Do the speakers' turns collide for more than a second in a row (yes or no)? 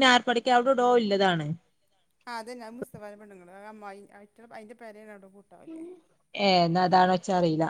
no